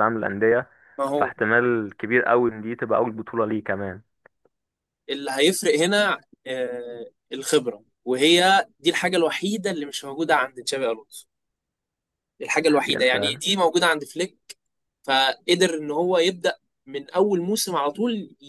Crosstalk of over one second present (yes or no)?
no